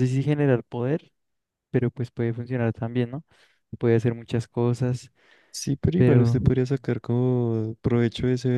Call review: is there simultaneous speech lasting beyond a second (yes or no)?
no